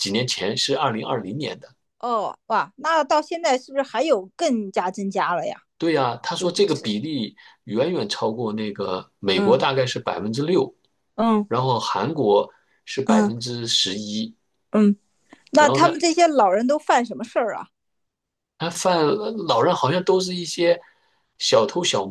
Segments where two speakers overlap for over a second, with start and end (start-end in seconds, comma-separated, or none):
none